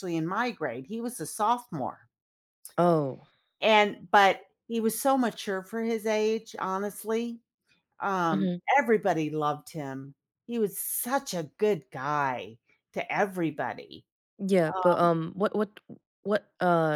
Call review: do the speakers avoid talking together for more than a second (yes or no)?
yes